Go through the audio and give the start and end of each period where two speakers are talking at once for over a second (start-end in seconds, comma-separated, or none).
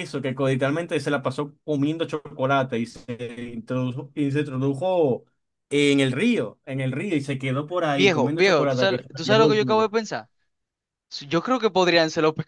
8.0-9.9